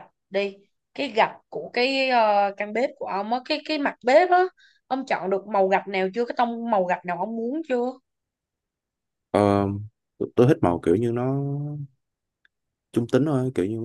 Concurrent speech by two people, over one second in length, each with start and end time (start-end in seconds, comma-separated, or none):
none